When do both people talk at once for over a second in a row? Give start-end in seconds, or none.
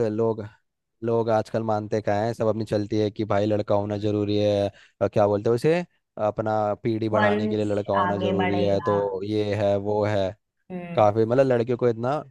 7.1-9.0